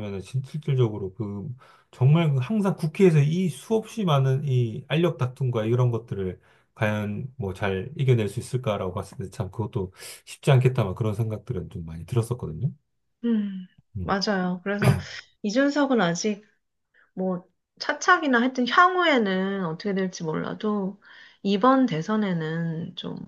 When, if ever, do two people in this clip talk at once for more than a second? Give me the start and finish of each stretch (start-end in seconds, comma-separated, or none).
none